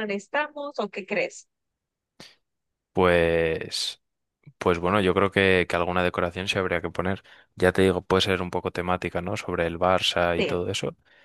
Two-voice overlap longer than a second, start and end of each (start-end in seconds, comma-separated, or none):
none